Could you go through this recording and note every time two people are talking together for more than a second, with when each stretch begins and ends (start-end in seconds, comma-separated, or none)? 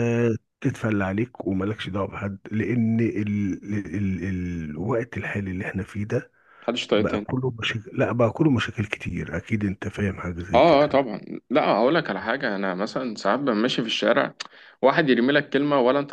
none